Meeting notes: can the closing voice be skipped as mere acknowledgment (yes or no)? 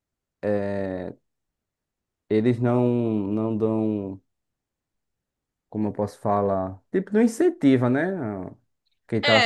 no